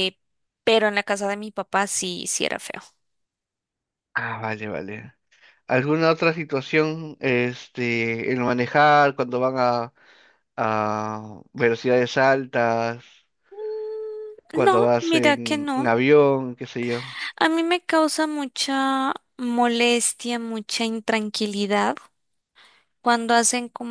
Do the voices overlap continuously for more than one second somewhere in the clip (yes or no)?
yes